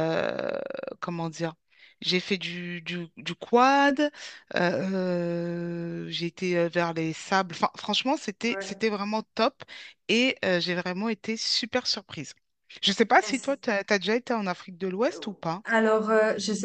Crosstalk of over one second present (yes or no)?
no